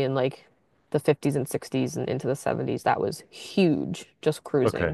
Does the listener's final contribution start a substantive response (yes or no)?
no